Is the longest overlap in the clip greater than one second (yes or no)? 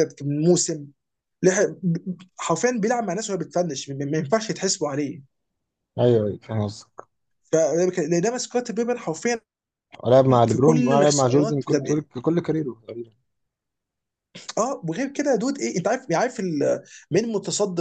yes